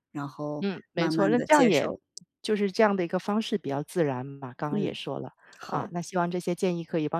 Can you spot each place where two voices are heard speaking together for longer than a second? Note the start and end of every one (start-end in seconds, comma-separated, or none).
0.6-1.9